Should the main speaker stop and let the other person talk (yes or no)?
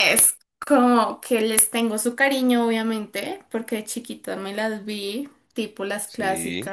no